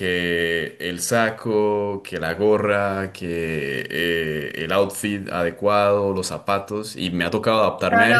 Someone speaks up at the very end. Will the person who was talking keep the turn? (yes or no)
no